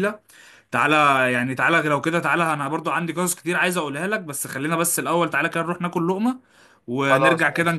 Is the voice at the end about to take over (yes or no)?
no